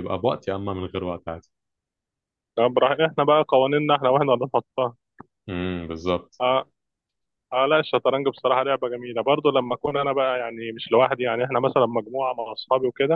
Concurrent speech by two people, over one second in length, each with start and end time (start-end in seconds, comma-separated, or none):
none